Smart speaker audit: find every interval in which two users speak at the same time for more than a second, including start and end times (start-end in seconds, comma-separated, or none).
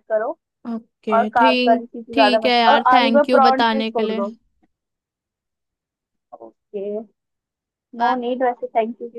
1.1-4.2